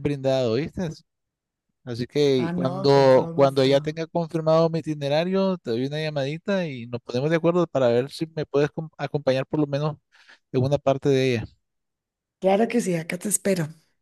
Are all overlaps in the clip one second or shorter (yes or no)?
no